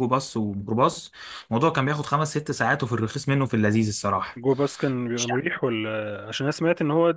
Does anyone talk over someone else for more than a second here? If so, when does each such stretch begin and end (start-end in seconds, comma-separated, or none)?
none